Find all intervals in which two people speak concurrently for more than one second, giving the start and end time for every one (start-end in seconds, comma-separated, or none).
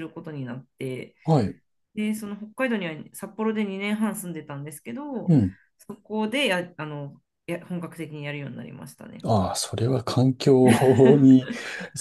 none